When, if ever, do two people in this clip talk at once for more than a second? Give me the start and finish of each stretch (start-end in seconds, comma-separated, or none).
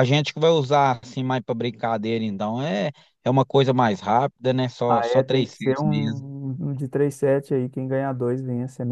4.9-6.2